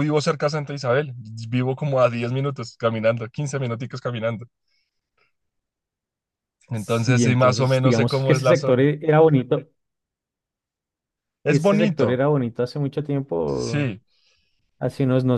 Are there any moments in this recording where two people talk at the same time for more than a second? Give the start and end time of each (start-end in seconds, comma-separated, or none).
6.7-8.8